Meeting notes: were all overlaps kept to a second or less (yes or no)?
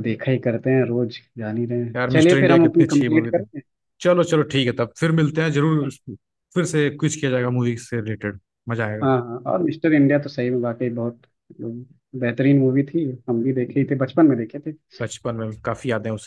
no